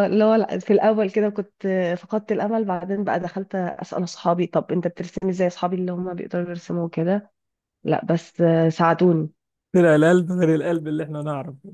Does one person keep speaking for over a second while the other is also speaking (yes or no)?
no